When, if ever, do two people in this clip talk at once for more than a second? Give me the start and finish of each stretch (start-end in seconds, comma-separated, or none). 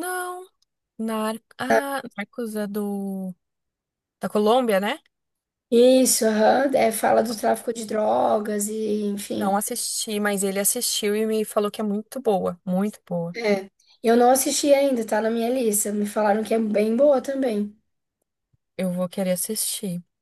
none